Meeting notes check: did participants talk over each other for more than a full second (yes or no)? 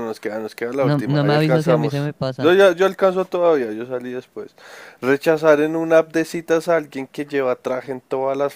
yes